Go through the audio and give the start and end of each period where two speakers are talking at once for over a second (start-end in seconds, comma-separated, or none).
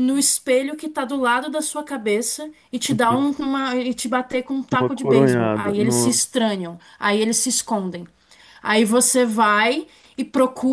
4.8-6.3